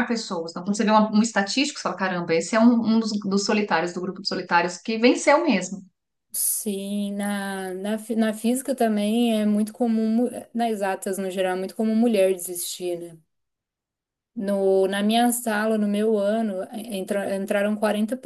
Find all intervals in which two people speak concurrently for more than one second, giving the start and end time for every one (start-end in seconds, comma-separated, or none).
none